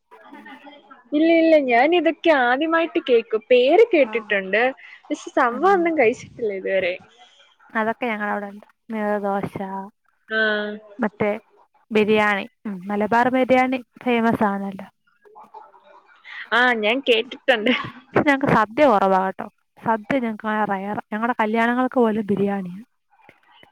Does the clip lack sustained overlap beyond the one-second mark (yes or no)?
yes